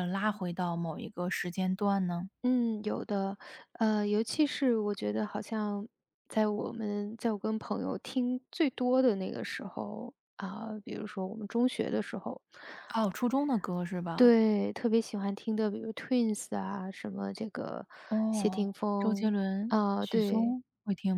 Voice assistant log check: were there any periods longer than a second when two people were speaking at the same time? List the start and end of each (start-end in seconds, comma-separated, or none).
18.3-20.6